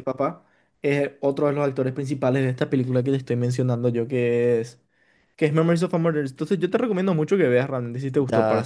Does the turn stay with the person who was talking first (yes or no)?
no